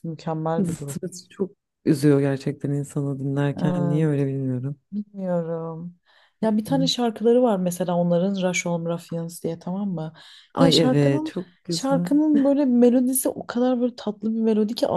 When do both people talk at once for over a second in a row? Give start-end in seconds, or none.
10.6-12.1